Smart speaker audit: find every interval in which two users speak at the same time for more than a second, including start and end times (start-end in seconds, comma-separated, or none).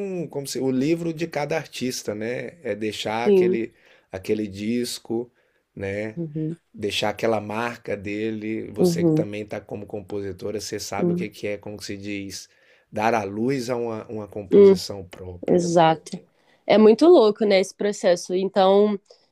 none